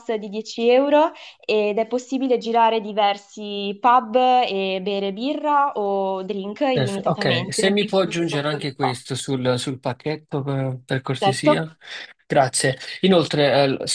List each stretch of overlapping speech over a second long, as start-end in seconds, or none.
6.7-9.0